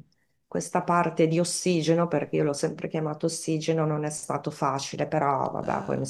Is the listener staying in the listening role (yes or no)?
yes